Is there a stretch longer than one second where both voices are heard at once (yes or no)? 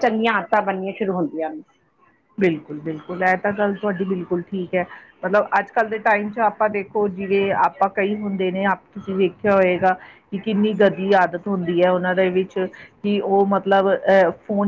no